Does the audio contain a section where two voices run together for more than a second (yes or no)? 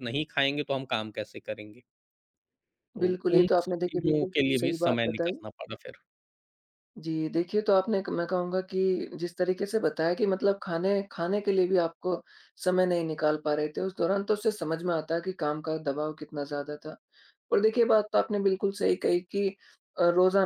yes